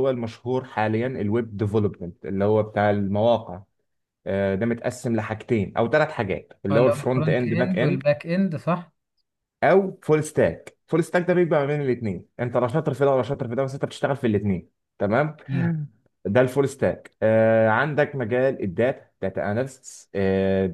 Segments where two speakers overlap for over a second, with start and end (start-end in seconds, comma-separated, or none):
6.7-8.0